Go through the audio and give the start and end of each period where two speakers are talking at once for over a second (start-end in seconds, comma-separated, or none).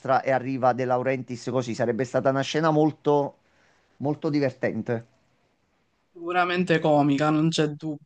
none